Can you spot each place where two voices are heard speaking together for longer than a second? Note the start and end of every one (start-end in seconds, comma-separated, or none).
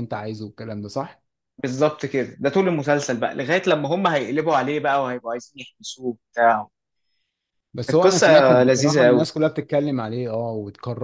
7.9-9.3